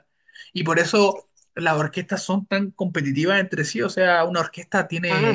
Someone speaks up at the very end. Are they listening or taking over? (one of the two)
listening